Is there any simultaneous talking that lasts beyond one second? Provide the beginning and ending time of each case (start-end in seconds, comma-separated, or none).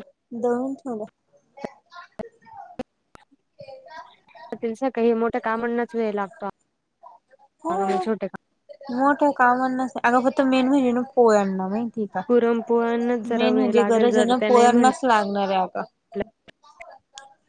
13.4-14.9